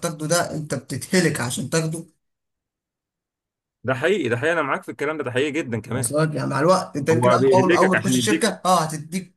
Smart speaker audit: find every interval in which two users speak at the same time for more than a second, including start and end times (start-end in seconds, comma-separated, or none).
7.1-8.5